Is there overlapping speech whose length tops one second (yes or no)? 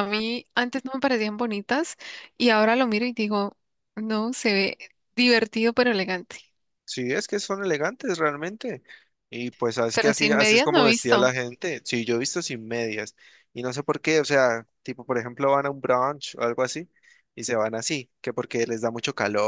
yes